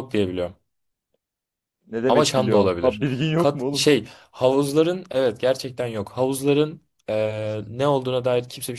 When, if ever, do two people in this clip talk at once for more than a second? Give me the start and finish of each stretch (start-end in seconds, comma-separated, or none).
2.1-3.8